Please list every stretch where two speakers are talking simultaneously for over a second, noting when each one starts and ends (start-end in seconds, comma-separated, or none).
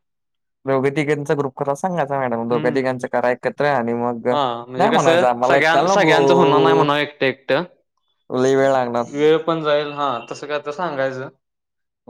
4.8-6.8